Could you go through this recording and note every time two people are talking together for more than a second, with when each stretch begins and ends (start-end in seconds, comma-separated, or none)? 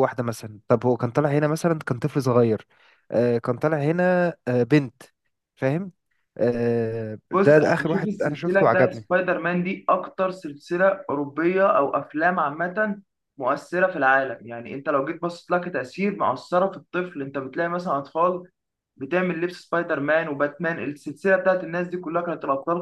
7.3-9.1